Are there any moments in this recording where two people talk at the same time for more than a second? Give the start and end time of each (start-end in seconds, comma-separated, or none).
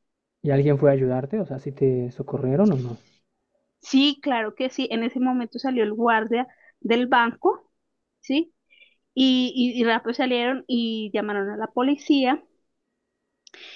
none